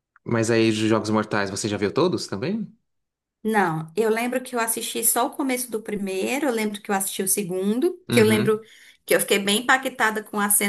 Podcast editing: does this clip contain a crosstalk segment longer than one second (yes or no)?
no